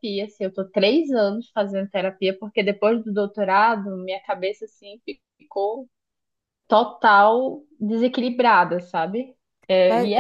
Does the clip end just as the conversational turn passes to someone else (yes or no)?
yes